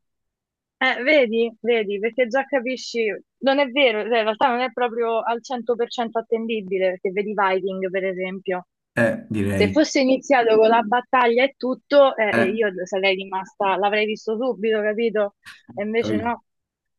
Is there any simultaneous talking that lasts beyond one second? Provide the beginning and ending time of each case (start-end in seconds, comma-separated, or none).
none